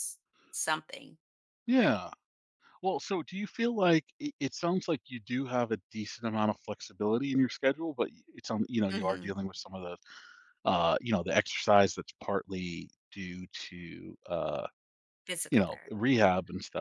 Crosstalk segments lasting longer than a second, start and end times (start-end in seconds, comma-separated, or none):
none